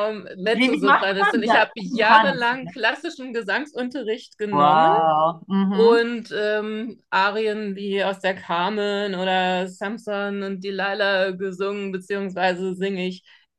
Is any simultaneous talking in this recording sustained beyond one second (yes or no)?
yes